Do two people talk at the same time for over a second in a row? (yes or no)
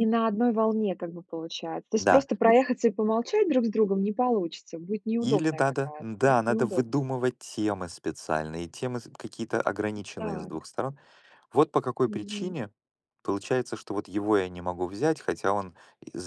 yes